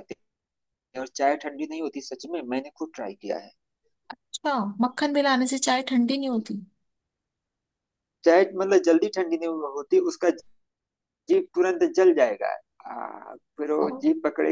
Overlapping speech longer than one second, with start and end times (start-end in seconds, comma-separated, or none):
none